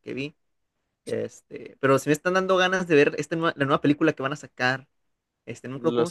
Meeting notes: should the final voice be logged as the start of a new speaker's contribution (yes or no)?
no